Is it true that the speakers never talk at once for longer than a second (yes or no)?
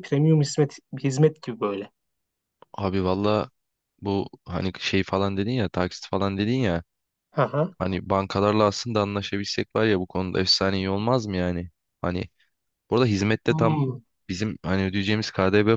yes